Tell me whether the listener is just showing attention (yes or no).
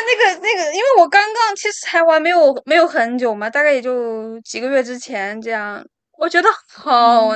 yes